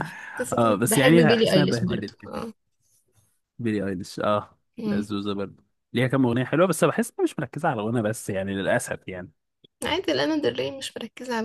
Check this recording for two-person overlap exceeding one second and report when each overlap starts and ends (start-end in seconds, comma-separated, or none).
0.6-2.3